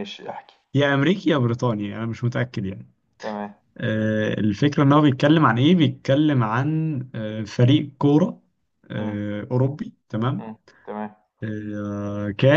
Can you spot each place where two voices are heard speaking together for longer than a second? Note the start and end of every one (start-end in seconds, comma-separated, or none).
none